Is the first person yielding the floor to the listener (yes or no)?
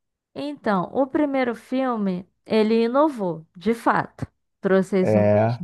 no